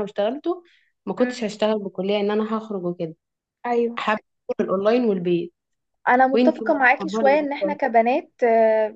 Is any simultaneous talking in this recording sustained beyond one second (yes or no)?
yes